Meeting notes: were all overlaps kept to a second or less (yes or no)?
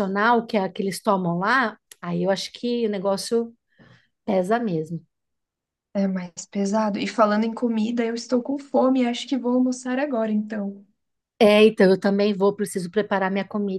yes